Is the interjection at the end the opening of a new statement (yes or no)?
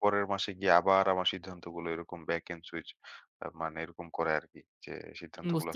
no